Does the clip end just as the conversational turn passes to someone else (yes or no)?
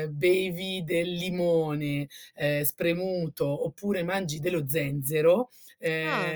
no